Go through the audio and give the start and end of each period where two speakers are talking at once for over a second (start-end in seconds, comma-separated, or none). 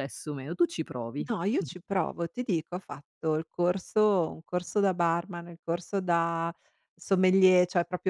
none